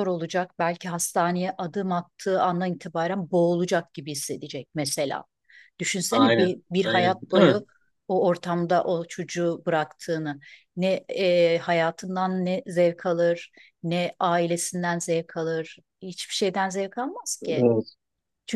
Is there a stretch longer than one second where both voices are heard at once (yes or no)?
yes